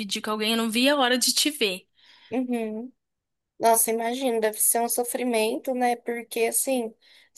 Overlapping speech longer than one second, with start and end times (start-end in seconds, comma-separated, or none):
none